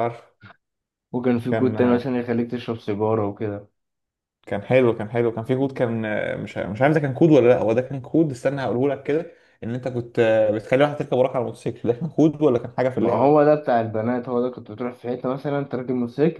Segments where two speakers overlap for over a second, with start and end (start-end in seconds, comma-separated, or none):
none